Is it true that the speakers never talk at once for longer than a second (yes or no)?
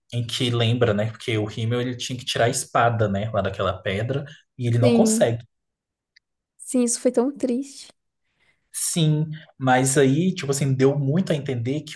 yes